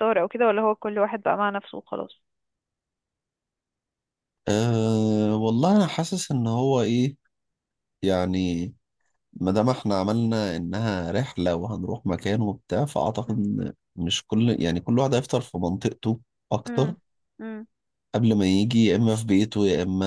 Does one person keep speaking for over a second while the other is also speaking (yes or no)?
no